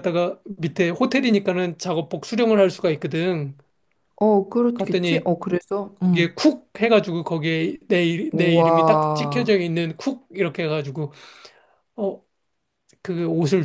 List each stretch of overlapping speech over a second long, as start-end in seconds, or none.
8.3-9.6